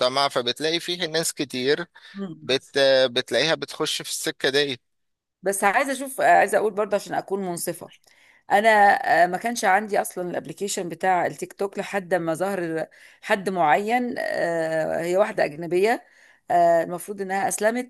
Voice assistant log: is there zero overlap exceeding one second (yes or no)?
yes